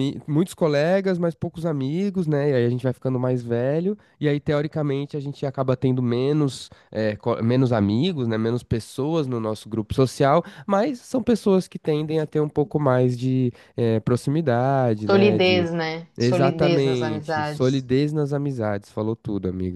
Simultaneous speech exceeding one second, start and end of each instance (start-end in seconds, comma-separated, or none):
16.2-17.9